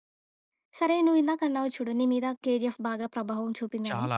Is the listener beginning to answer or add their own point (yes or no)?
no